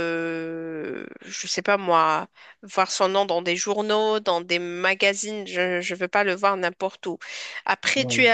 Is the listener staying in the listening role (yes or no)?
yes